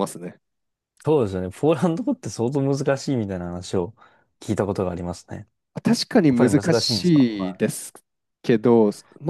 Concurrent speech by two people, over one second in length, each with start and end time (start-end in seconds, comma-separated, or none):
6.3-7.6